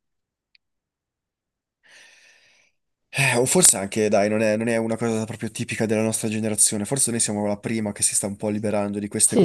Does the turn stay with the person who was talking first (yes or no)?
no